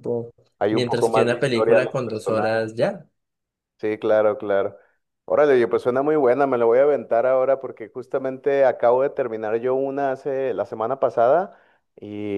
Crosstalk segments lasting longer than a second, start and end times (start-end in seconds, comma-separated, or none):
0.7-2.7